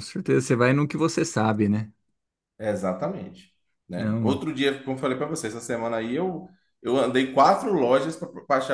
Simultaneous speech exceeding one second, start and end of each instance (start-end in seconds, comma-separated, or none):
none